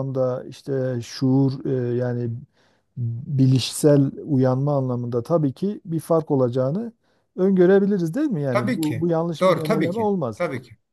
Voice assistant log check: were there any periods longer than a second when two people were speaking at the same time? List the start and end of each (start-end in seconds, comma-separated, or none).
8.5-10.4